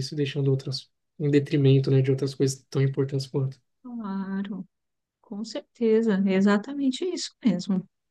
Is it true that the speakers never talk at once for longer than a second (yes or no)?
yes